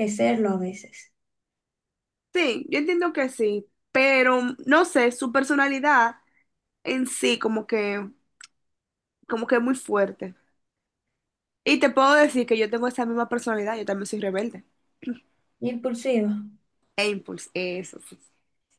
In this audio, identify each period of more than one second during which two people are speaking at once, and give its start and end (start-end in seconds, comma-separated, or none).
none